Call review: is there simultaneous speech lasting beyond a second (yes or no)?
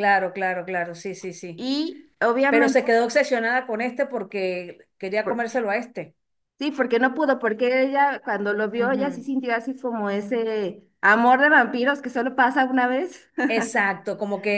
no